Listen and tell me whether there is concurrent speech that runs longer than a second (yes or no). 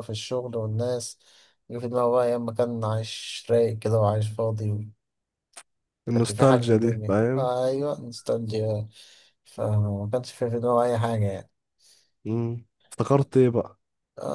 yes